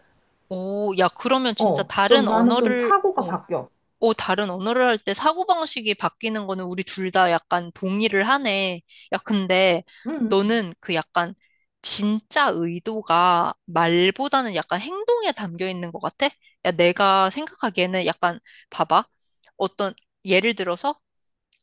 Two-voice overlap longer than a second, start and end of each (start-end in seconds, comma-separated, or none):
1.6-3.3